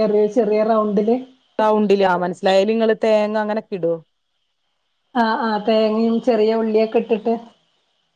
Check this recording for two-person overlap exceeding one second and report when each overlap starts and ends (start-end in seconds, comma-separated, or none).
none